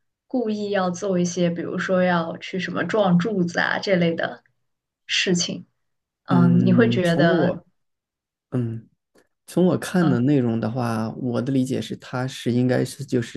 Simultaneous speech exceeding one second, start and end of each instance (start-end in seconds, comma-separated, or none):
6.3-7.6